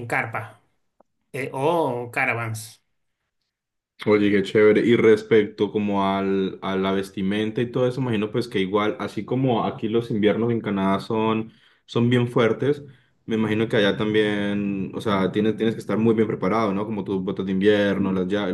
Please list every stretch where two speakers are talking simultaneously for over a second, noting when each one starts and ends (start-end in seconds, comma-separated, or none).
none